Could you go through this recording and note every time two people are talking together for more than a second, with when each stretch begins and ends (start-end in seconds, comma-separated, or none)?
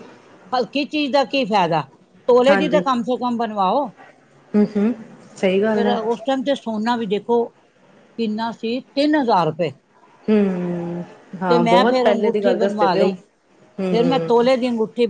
11.5-13.1